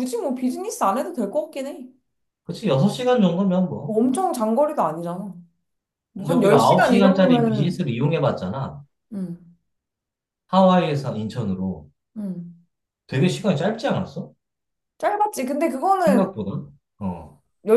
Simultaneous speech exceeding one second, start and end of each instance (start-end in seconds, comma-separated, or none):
6.2-7.8